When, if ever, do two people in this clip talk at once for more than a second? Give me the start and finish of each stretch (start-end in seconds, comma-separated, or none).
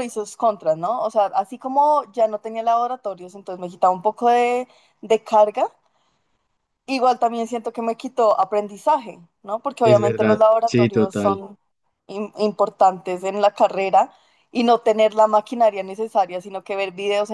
9.8-11.4